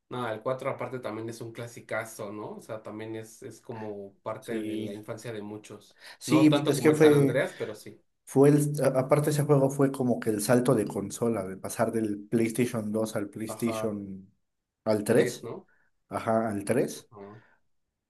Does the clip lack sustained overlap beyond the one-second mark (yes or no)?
no